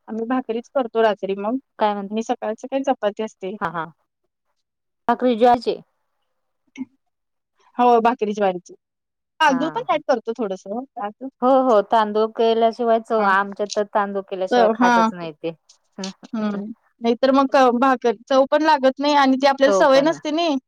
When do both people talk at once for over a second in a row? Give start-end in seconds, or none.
none